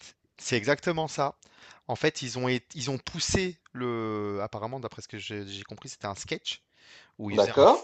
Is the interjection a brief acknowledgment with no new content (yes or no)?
yes